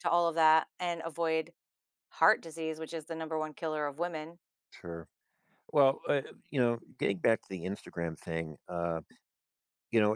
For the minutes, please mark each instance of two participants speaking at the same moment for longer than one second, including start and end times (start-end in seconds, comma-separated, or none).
none